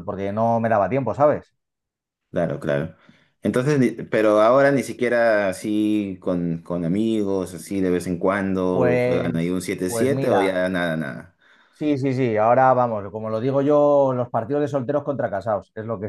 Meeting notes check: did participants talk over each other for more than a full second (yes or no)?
yes